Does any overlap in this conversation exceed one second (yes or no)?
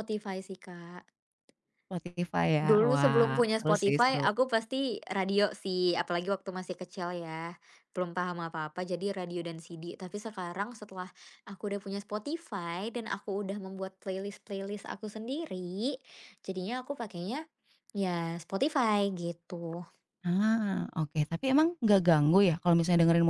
yes